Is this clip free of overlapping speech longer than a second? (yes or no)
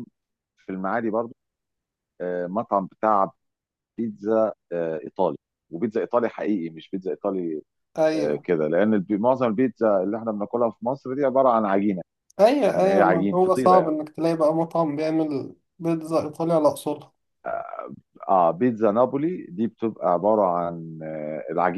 no